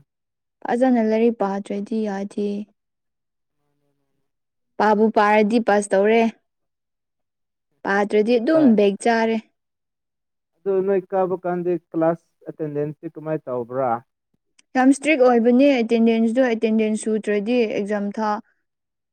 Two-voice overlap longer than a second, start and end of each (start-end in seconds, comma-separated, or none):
none